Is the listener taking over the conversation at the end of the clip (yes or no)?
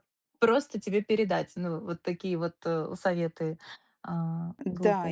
yes